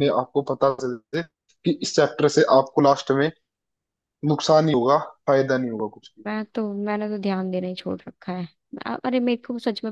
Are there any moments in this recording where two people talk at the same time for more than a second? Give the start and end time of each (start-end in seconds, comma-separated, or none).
none